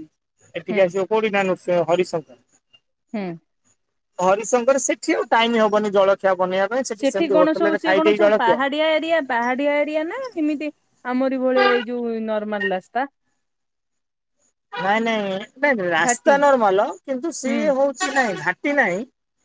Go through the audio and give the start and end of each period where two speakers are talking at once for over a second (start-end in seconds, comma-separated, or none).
none